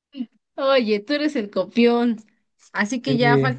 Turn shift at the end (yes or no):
no